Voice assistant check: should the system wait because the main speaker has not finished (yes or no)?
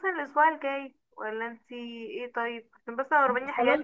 yes